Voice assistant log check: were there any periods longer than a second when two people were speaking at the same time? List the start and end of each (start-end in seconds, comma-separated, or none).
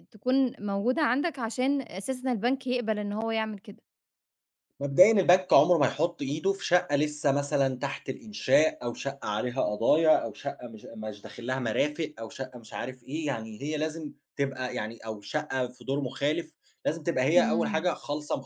none